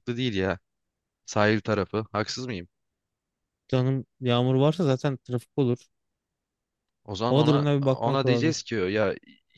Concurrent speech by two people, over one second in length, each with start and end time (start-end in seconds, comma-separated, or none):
7.3-8.6